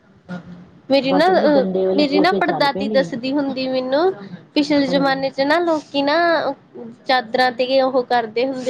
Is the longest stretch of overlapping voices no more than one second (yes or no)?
no